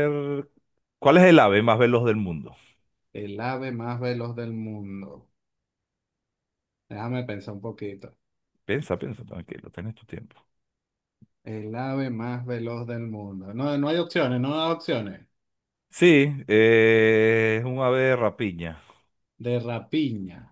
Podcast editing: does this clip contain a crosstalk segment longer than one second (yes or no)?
no